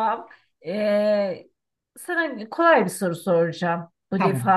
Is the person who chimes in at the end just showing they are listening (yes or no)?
yes